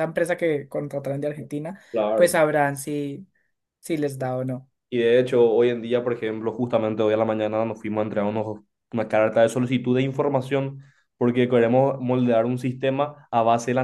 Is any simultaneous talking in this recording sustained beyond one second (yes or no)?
no